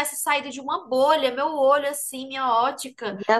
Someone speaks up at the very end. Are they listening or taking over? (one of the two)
listening